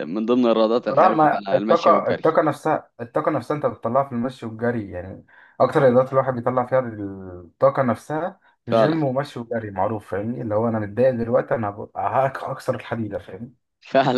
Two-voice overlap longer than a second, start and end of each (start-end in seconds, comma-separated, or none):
0.9-2.4